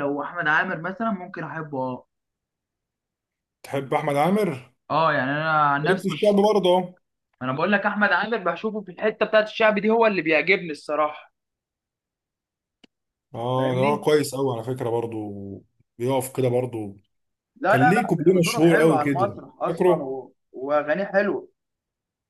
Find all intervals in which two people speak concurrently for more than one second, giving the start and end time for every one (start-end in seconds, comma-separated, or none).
17.7-20.1